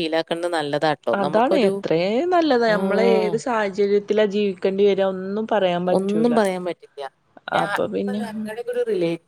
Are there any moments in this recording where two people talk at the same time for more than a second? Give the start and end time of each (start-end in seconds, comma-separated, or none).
none